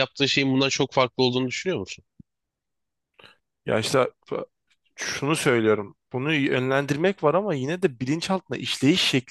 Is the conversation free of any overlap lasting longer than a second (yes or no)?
yes